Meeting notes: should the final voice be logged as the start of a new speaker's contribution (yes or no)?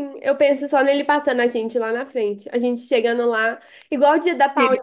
no